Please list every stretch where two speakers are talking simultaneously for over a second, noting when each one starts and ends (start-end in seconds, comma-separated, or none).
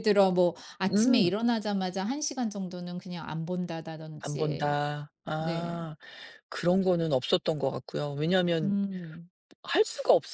none